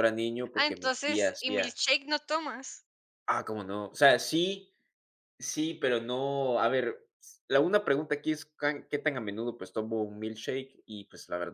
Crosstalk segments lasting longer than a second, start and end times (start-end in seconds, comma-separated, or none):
0.5-1.8